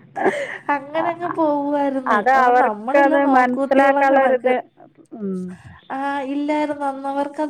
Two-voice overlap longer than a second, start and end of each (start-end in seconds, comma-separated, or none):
2.1-4.5